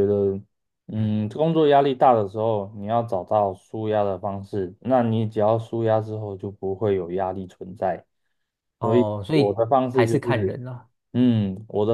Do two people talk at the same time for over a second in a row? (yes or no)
yes